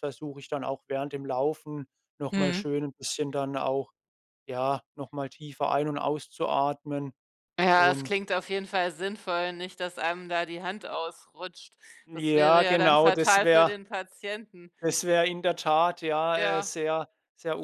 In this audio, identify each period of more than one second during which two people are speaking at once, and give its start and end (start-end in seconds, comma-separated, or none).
12.1-13.8